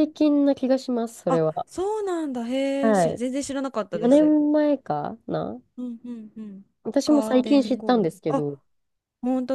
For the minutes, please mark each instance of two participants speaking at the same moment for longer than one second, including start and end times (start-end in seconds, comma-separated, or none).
7.0-8.4